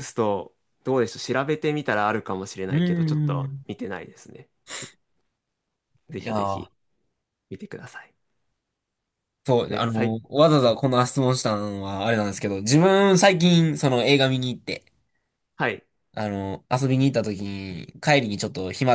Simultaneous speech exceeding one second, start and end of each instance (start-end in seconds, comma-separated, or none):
none